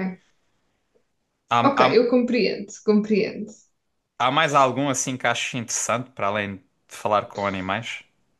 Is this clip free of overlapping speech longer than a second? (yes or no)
yes